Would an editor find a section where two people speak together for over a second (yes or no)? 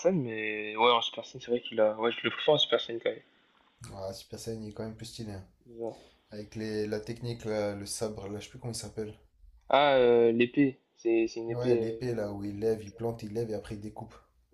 no